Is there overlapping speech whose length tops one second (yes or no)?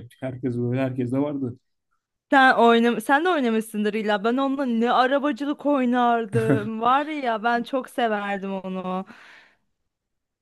no